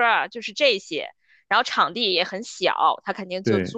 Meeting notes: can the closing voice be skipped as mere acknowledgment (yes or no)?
yes